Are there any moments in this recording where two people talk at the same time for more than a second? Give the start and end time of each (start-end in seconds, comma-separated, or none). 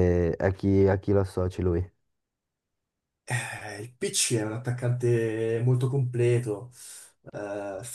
none